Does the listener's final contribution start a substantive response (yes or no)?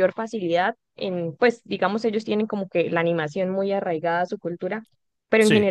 no